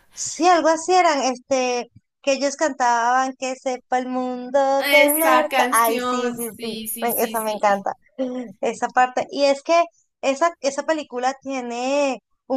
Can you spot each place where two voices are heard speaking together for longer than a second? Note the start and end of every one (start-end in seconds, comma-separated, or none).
4.8-7.8